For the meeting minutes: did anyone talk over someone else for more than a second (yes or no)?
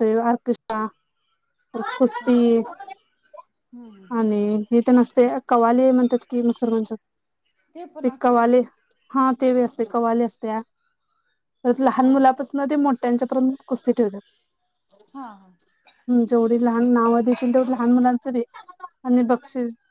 no